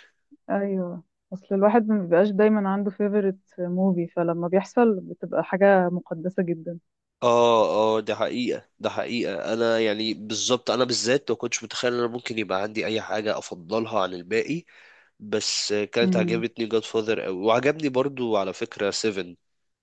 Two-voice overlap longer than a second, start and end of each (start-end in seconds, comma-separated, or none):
none